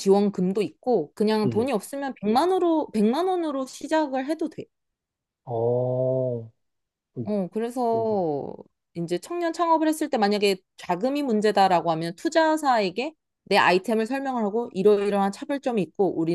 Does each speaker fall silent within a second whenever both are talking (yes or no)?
yes